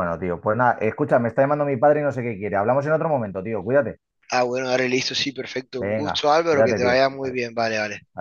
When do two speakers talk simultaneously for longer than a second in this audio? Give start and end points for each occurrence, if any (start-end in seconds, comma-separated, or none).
5.8-7.4